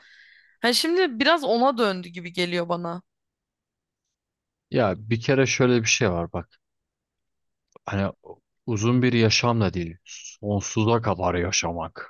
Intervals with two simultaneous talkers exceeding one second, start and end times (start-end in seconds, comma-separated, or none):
none